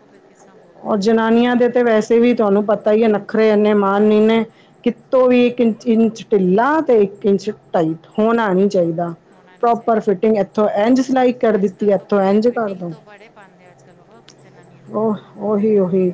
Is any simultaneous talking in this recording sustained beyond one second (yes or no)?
yes